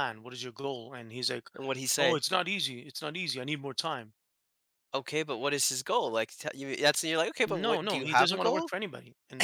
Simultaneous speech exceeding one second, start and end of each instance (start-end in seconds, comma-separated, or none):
7.5-8.7